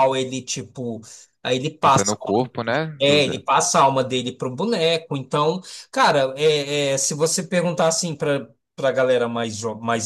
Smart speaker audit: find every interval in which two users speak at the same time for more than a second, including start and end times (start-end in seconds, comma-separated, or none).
1.8-3.4